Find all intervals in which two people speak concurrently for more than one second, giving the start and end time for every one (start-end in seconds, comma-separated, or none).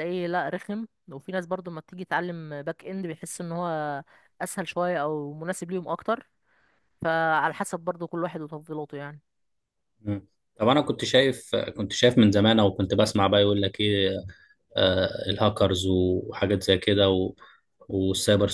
none